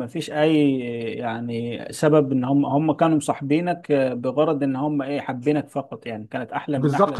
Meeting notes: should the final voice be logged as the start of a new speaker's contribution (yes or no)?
yes